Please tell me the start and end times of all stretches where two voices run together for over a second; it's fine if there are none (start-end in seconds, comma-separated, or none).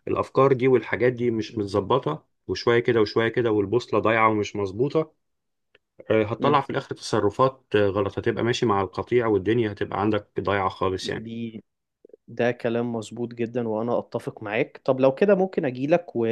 none